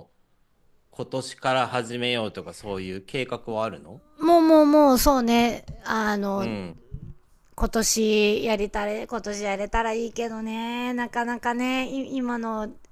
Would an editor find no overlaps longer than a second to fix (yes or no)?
yes